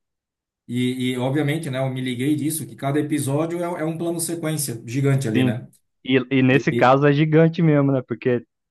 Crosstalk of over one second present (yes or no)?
no